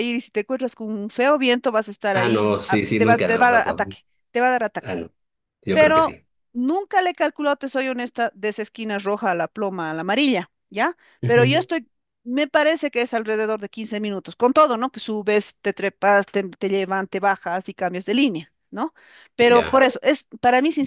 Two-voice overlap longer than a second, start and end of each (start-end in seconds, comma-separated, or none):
2.1-3.8